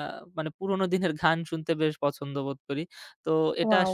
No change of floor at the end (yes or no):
yes